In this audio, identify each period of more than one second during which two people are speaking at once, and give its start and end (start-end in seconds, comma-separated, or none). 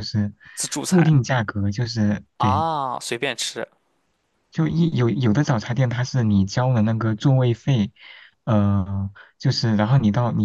none